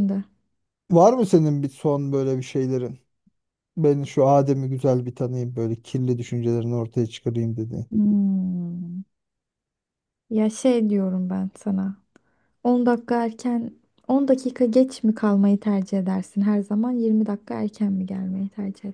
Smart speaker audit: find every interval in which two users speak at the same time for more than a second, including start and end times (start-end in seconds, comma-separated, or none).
none